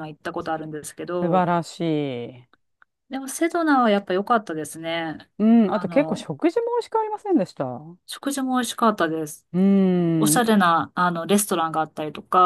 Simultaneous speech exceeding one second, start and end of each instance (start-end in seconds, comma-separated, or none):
none